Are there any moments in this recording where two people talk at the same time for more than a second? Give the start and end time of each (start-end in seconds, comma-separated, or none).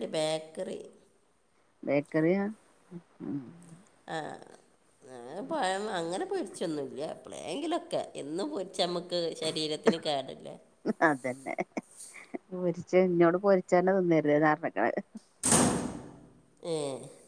none